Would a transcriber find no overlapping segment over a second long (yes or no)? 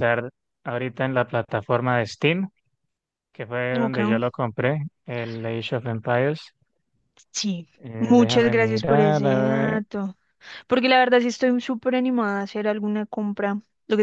no